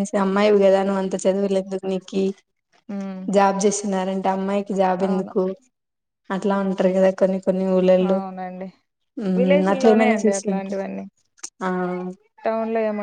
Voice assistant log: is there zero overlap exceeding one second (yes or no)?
no